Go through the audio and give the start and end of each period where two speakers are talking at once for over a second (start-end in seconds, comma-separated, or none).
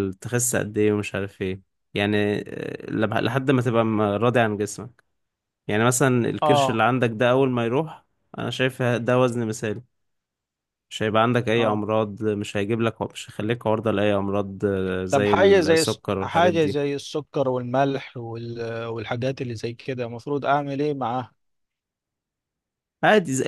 15.1-16.8